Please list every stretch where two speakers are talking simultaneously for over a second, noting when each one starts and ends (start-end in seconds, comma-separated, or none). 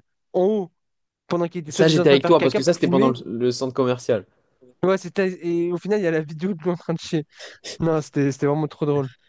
1.7-3.1